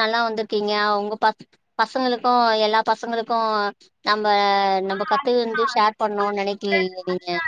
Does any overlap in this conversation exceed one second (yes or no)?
yes